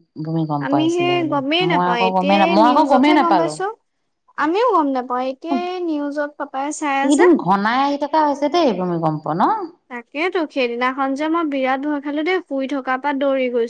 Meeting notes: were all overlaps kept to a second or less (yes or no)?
no